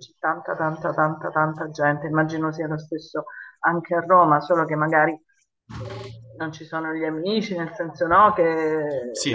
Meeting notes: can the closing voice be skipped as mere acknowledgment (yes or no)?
yes